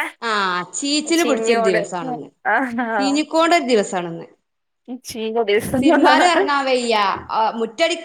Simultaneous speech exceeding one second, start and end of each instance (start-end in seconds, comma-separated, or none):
none